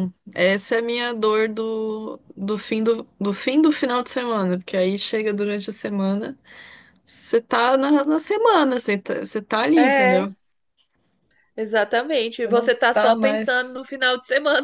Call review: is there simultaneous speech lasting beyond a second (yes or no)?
yes